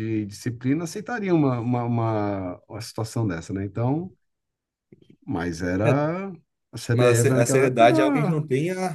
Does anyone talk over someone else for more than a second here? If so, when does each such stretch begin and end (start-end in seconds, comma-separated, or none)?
6.9-8.4